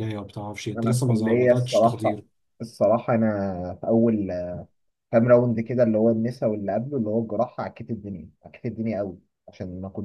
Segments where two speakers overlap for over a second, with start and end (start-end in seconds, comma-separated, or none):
0.8-2.2